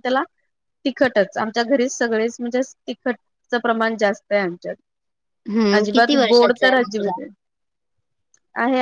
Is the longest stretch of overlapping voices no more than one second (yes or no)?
no